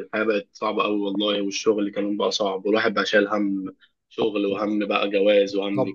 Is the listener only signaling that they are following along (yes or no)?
no